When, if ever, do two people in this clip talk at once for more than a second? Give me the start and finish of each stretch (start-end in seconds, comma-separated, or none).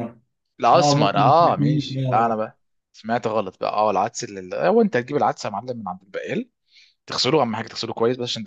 0.7-2.4